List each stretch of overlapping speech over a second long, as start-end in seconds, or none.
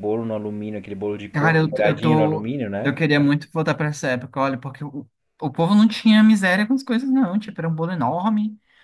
1.3-2.9